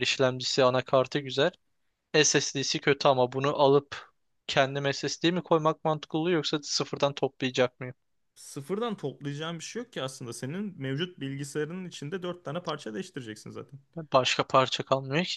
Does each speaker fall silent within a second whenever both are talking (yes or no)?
yes